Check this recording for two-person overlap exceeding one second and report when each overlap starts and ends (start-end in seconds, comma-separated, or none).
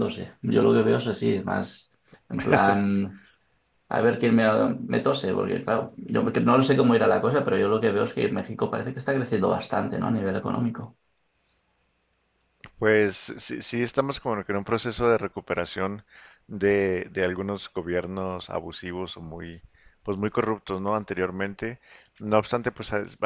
none